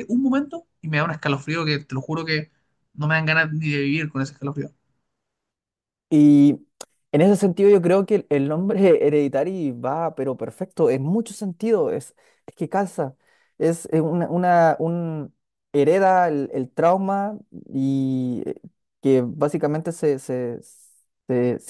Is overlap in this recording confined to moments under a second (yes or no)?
yes